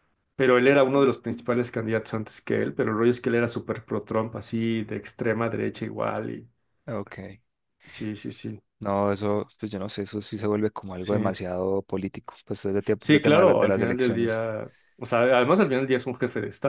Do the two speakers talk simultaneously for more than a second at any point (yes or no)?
yes